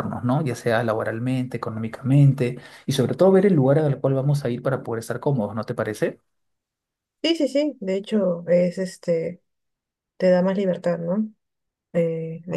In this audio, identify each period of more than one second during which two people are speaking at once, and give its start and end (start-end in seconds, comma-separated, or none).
none